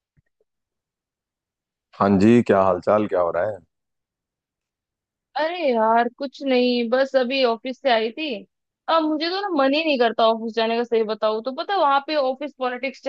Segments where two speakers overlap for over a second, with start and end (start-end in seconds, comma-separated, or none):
none